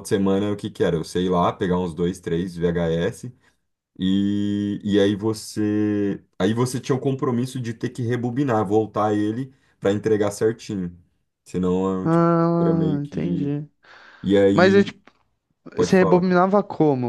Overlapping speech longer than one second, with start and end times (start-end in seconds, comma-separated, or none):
12.0-13.5